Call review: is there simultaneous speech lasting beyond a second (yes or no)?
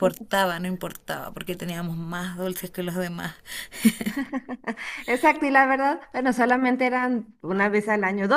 no